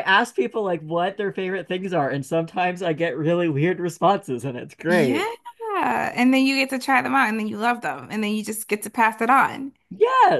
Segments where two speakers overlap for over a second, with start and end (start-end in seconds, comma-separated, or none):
none